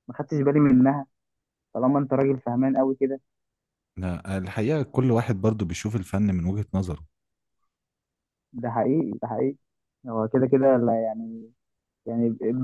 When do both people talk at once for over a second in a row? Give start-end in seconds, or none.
none